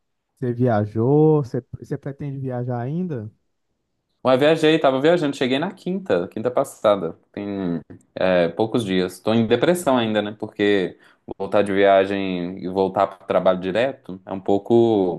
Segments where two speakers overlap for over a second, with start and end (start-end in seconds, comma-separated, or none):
none